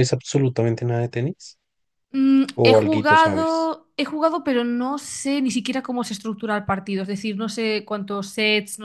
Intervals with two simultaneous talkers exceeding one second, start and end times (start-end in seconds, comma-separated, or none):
2.5-3.7